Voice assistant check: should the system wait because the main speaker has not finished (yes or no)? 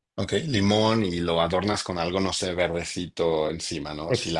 no